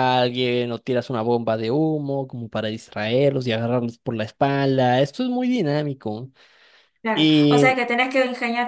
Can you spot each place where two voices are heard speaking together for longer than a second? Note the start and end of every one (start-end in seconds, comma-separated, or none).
none